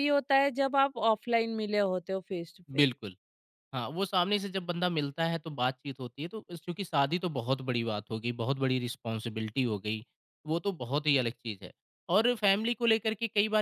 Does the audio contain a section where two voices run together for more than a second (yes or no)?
no